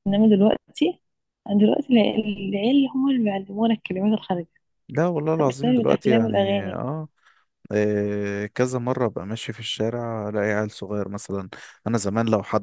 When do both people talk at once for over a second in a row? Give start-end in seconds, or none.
5.5-6.8